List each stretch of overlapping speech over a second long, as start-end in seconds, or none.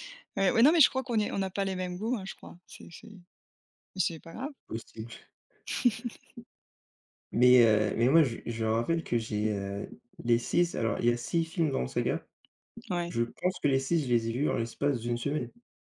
none